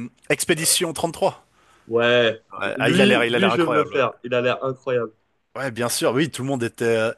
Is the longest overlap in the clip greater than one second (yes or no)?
yes